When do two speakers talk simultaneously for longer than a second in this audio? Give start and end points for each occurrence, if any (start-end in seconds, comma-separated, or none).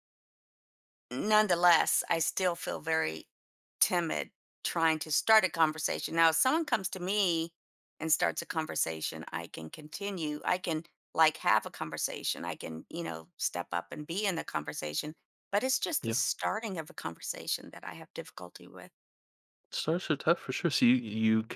none